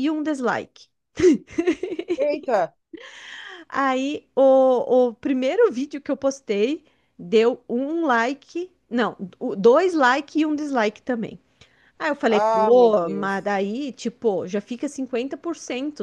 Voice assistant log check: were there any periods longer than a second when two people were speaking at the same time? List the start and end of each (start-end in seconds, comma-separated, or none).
12.3-13.5